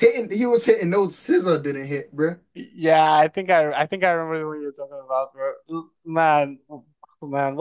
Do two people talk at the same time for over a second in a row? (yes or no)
no